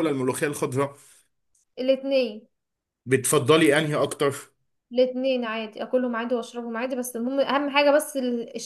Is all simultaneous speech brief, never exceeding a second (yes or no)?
yes